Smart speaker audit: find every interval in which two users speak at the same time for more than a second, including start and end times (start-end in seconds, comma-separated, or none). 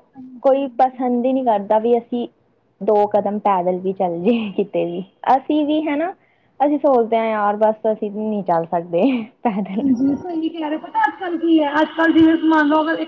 none